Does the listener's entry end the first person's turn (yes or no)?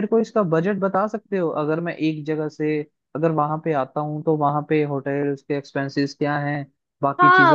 yes